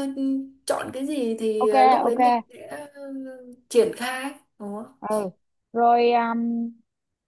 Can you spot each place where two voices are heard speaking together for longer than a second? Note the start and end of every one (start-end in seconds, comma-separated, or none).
none